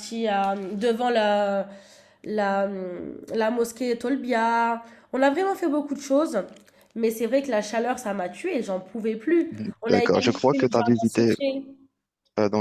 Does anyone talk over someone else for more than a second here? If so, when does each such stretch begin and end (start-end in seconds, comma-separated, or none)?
9.9-11.3